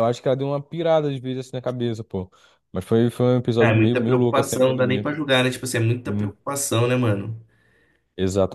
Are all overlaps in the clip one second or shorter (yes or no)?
no